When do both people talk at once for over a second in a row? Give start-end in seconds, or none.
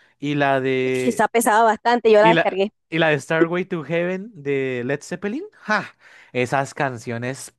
none